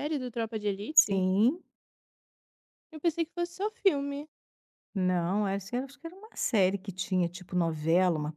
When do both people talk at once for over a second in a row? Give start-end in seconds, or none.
none